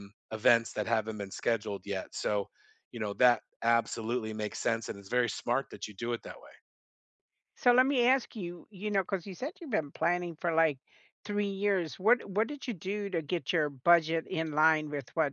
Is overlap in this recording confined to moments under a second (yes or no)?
yes